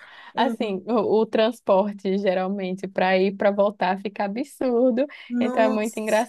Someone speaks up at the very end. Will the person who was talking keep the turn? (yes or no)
yes